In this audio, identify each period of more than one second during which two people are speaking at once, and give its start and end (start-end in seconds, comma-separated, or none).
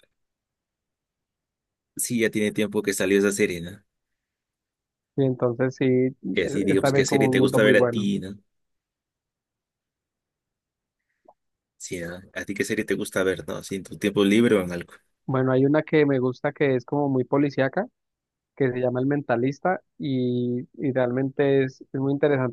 6.7-8.1